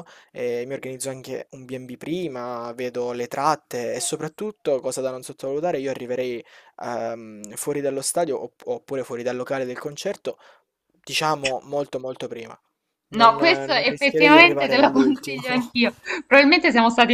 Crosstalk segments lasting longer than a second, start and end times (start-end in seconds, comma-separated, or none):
13.2-15.4